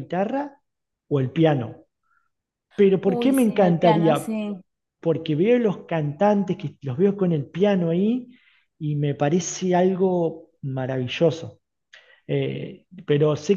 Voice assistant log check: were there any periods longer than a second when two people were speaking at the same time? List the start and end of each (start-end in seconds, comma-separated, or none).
3.0-4.3